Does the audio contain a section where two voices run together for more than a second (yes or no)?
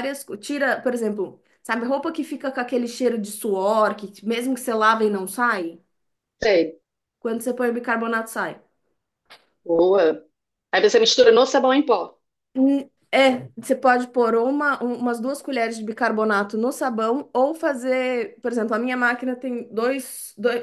no